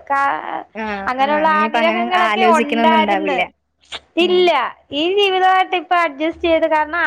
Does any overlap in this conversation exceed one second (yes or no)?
yes